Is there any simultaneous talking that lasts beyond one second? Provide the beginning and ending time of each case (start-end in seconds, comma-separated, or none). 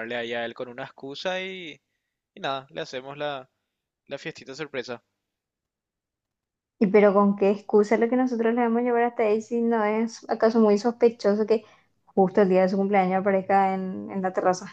none